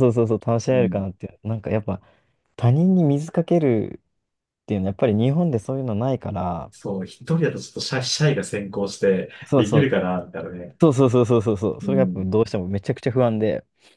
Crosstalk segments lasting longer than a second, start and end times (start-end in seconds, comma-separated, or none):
none